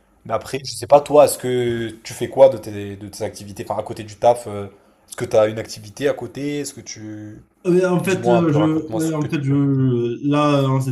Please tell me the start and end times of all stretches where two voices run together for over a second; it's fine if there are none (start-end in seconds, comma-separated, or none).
8.0-9.5